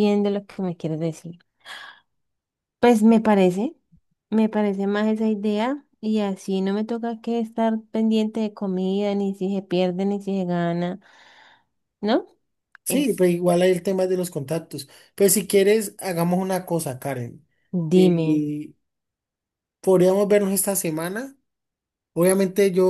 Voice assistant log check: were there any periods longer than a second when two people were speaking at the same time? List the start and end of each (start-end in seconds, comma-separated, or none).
none